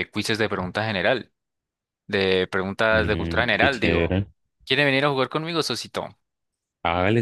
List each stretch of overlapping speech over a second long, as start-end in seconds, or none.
2.9-4.2